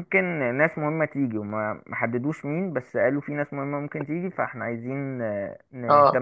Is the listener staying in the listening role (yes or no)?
no